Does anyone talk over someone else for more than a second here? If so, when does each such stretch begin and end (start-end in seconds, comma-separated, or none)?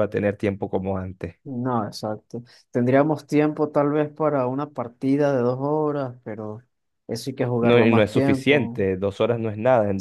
7.6-8.8